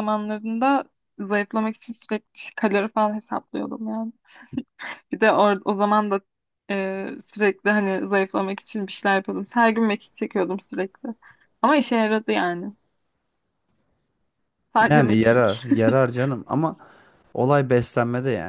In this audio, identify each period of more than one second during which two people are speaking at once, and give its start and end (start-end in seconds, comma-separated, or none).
none